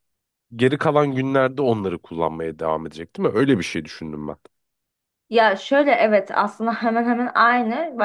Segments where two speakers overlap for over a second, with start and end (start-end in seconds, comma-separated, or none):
none